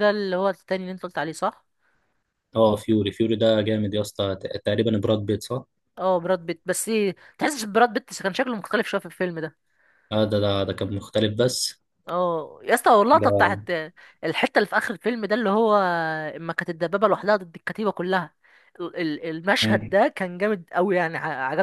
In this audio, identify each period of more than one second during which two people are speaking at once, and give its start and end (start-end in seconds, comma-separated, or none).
none